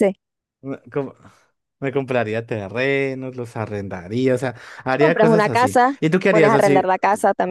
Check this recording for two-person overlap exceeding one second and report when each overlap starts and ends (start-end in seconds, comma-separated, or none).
5.0-6.8